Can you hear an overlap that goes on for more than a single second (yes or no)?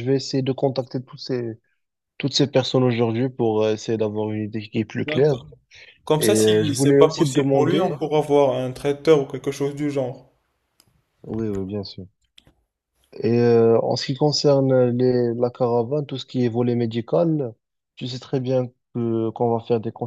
yes